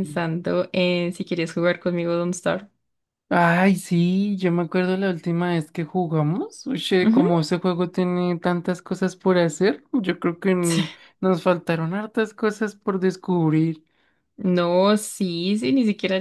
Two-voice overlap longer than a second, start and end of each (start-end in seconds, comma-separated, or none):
none